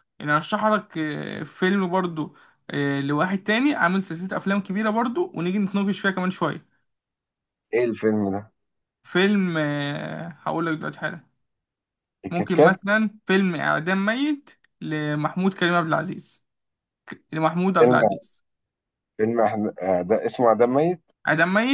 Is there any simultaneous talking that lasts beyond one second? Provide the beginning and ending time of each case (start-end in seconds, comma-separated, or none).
none